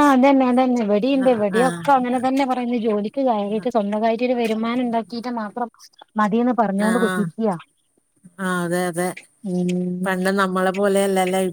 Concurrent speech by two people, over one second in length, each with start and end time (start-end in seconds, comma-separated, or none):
none